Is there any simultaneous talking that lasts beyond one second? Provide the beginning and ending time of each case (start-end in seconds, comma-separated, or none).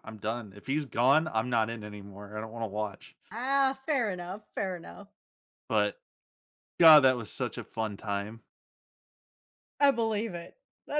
none